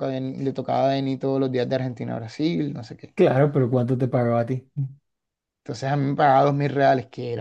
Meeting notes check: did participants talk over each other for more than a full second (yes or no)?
no